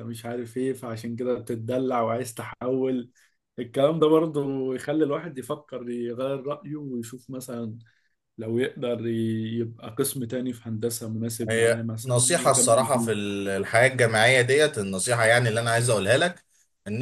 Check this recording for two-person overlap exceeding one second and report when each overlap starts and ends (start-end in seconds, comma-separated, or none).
11.5-13.1